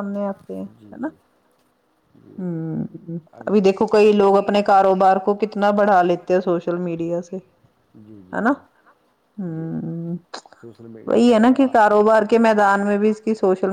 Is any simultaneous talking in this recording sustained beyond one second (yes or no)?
no